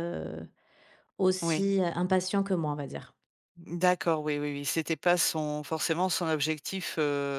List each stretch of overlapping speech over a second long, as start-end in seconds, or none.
none